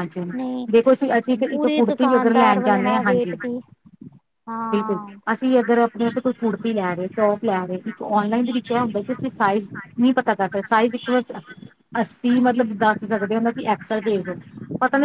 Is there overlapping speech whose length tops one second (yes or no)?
yes